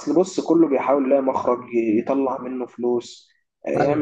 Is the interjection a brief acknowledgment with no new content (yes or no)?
yes